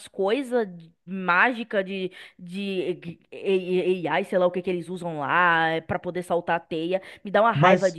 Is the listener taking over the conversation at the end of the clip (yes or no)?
yes